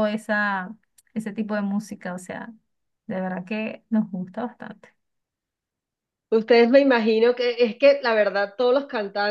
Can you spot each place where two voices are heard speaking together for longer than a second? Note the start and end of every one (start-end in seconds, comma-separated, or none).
none